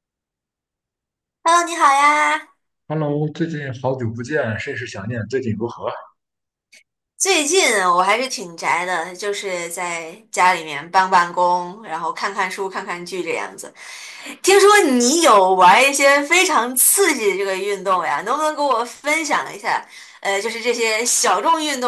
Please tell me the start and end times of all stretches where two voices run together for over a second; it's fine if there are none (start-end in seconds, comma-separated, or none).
none